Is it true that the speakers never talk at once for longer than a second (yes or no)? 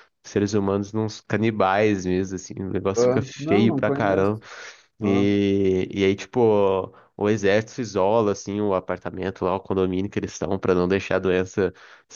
no